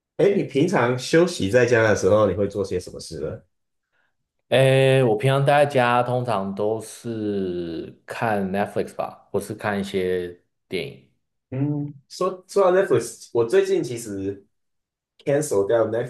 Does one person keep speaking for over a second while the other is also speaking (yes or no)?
no